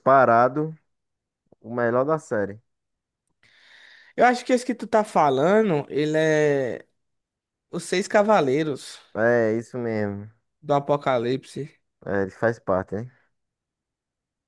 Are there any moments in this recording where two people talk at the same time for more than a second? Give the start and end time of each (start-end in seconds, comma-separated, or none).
none